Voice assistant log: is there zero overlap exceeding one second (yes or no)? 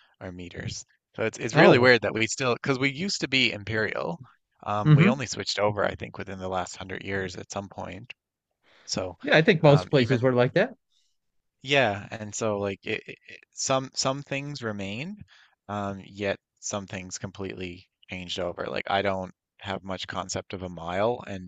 yes